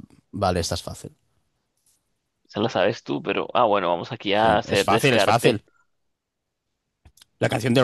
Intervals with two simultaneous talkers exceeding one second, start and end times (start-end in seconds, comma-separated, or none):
4.3-5.6